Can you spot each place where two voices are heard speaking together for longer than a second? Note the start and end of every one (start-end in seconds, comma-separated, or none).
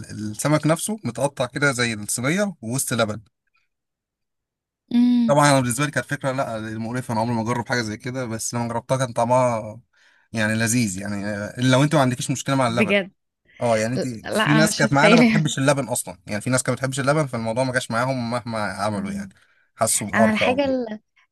14.2-15.5